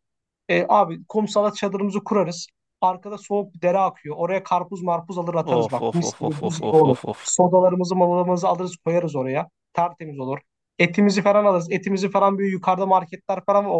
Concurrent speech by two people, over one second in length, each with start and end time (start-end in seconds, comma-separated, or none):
5.4-7.3